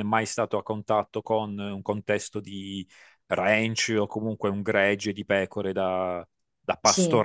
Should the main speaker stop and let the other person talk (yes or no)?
no